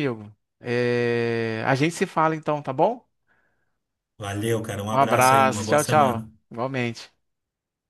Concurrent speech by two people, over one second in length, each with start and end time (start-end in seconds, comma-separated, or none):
4.9-6.3